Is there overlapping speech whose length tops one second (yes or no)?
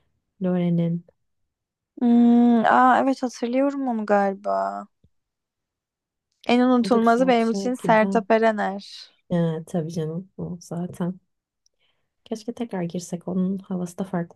yes